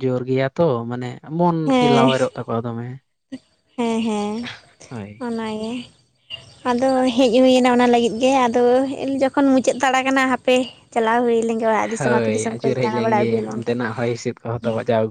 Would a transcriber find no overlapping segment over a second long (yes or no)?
no